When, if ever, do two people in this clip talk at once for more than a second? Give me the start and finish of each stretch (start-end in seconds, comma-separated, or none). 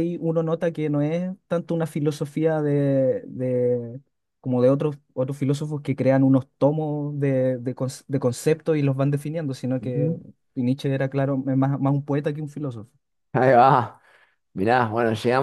none